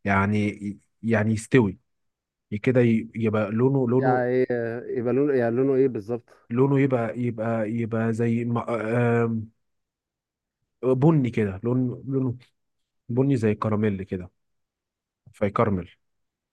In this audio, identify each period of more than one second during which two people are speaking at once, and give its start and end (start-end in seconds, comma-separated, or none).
none